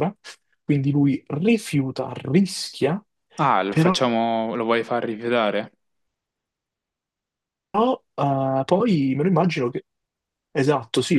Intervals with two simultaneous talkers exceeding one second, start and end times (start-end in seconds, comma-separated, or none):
none